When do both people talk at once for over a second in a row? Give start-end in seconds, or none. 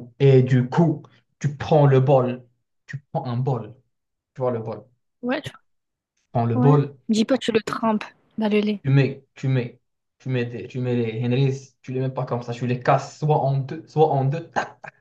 none